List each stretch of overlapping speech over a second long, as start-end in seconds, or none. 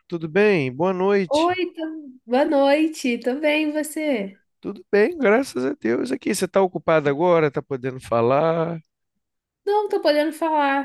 none